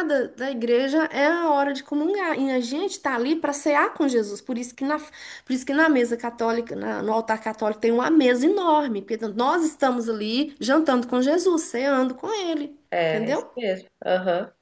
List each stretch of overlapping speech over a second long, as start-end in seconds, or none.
none